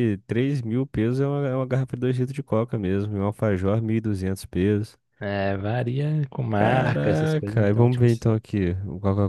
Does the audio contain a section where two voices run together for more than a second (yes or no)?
yes